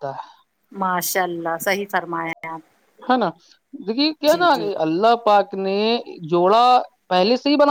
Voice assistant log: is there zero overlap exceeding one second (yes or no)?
yes